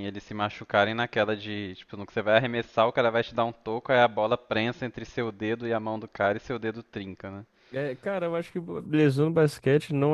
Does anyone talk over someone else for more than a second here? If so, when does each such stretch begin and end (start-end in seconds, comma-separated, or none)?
none